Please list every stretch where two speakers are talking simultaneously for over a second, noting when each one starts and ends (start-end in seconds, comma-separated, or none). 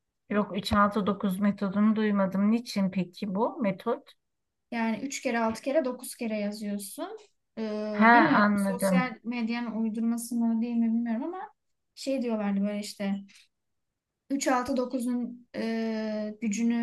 7.9-9.2